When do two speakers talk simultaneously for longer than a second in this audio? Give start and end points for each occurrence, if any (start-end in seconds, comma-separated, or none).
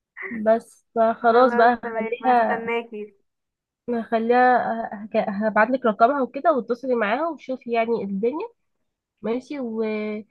1.2-2.7